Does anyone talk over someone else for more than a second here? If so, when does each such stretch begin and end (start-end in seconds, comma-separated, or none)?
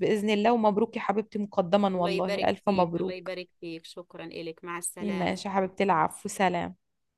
1.9-3.3